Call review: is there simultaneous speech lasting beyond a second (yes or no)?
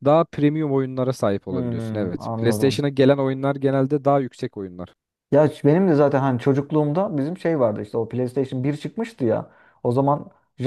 yes